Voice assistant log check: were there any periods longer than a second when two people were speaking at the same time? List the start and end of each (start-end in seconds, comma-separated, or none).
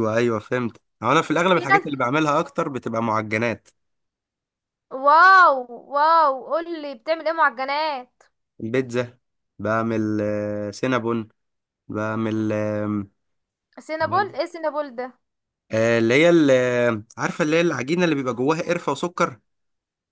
none